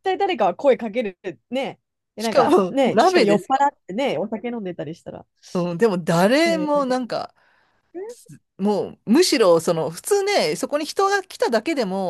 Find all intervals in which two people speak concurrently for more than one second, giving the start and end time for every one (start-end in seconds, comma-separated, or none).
2.2-3.7